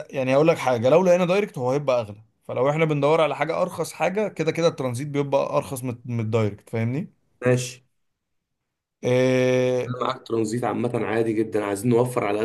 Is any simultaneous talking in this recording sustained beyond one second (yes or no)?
no